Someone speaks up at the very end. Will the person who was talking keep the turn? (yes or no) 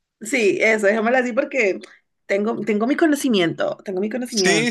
no